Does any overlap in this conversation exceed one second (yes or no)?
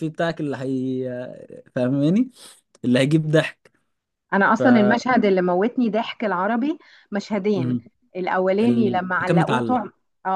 yes